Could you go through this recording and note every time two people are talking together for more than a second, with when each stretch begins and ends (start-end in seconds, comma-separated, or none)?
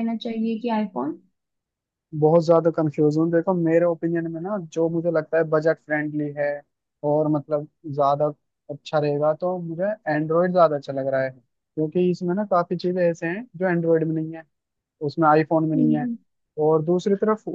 none